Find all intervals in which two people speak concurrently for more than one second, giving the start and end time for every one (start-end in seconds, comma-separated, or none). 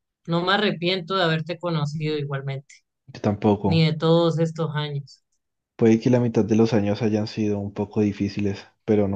none